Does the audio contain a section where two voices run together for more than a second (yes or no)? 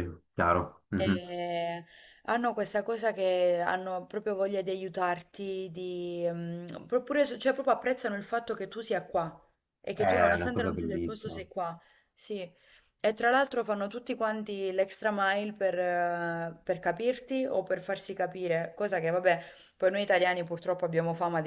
yes